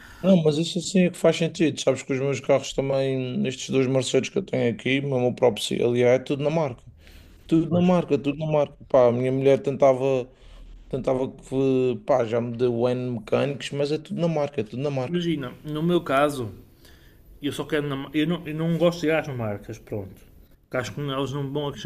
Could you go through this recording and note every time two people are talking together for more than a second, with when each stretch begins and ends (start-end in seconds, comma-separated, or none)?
none